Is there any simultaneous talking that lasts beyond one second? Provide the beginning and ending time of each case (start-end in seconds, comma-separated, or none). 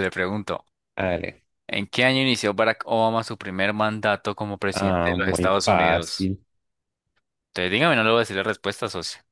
4.7-6.3